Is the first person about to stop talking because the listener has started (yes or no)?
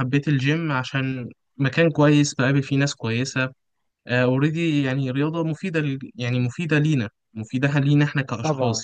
yes